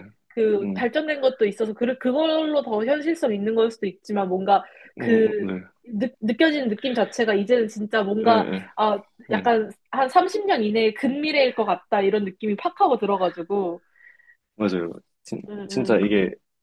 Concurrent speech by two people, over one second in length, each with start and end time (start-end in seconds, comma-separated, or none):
none